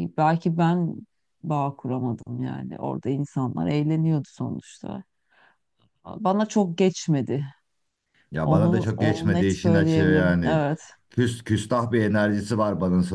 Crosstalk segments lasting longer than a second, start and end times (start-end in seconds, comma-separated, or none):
8.4-10.6